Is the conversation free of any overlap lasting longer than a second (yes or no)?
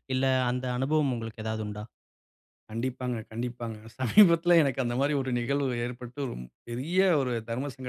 yes